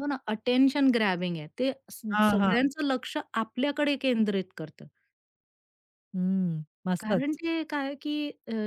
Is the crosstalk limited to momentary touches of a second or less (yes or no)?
yes